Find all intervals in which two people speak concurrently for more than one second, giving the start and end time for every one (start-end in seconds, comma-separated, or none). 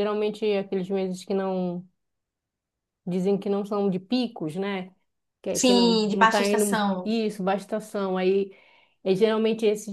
5.5-7.1